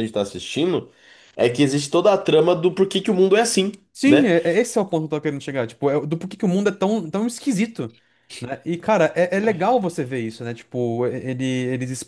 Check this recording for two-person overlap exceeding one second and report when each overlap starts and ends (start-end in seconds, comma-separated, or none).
none